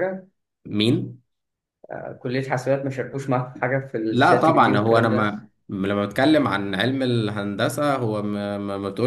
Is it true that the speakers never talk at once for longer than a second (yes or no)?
no